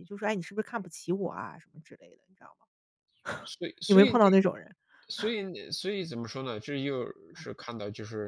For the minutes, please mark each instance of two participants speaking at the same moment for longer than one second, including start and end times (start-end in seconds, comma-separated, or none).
none